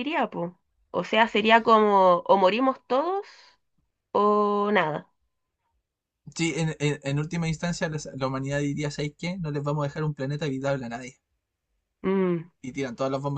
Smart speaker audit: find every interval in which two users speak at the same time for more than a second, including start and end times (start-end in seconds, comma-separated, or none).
none